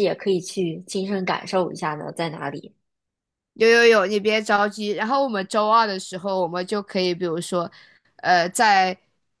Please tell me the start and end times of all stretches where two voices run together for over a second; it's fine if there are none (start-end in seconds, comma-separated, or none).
none